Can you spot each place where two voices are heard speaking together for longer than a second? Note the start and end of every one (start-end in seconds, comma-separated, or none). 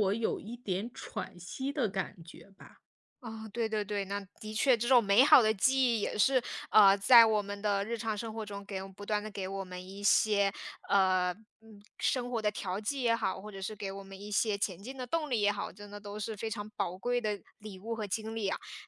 none